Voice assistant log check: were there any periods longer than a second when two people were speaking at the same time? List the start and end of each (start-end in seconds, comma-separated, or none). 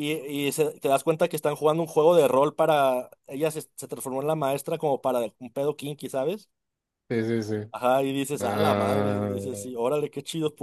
8.4-9.7